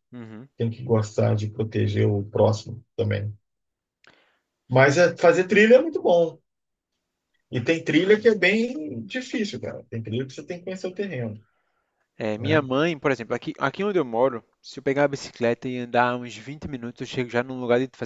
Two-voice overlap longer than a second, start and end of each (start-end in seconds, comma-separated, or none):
none